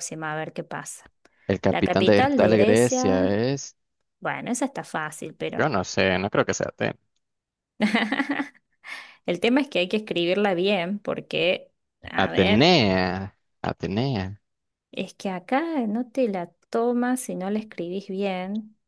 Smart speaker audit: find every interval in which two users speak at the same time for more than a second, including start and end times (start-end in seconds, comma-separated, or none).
1.7-3.4